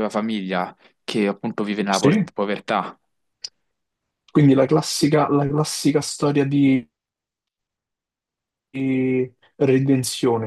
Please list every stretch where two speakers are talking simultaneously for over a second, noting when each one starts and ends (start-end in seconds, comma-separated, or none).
none